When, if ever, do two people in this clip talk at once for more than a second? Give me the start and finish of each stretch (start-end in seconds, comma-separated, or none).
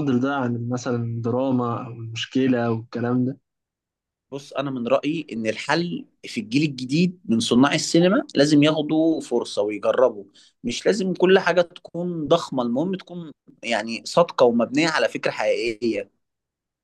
none